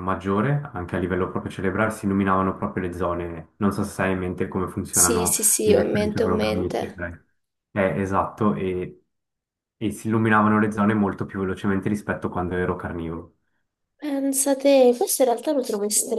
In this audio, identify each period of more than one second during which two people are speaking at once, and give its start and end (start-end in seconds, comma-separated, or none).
4.9-7.0